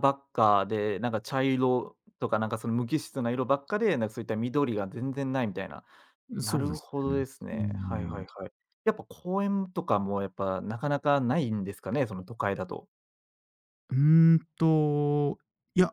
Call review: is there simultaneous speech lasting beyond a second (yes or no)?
yes